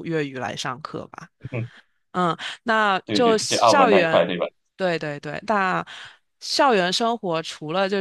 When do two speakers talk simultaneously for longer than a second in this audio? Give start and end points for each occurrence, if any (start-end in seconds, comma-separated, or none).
3.0-4.3